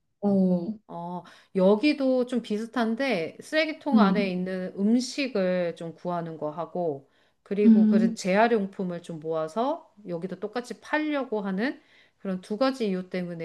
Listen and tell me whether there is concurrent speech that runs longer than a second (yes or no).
no